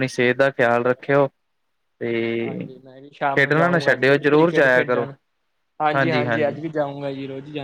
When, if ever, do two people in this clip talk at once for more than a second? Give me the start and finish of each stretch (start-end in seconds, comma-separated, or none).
3.3-5.0